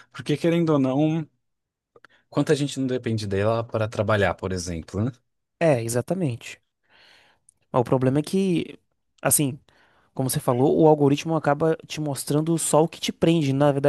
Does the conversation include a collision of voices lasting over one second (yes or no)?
no